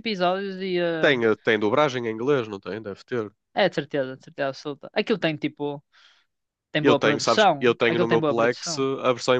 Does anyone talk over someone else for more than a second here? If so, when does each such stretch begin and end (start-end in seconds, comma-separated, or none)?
6.8-8.8